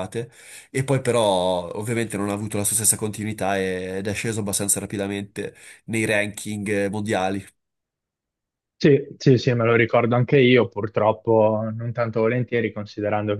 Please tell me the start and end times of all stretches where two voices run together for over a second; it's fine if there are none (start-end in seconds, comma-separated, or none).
none